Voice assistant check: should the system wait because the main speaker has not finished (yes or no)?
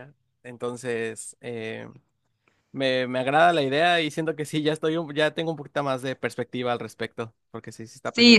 no